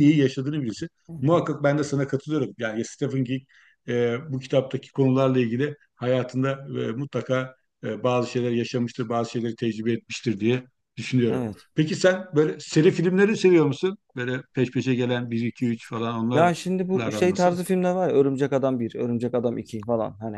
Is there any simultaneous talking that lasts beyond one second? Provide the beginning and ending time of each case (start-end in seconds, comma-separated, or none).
16.3-17.6